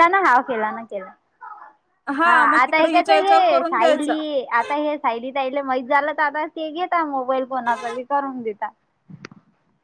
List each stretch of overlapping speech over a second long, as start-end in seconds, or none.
2.5-4.1